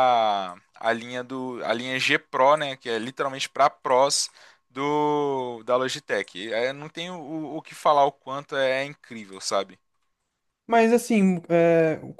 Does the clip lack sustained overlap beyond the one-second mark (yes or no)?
yes